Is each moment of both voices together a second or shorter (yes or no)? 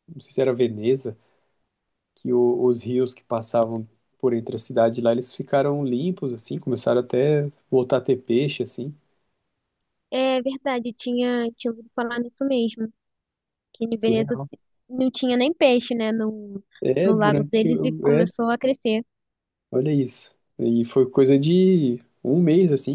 no